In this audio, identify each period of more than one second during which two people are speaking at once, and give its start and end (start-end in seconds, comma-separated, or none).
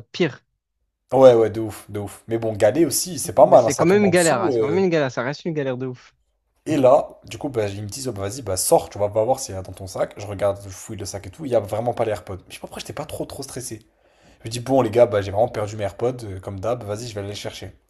3.4-4.8